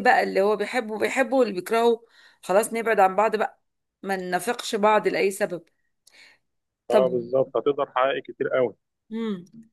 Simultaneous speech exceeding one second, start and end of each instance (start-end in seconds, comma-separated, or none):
none